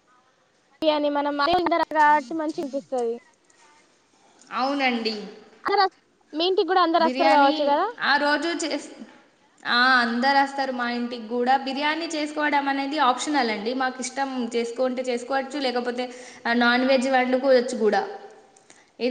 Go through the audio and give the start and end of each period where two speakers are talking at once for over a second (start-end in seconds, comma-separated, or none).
none